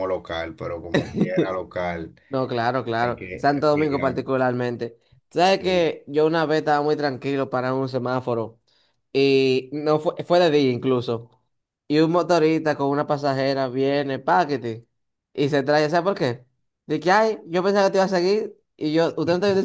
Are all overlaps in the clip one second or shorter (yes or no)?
no